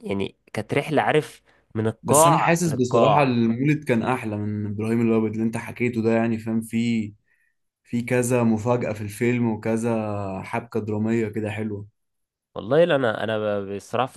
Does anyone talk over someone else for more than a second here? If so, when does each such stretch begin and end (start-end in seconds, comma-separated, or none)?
2.0-3.4